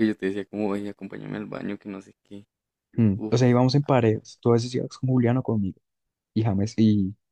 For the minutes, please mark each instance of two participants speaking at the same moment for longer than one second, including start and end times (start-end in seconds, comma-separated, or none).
none